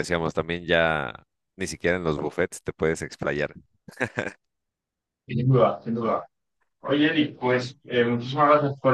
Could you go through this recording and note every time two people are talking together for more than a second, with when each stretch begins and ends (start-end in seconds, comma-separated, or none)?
none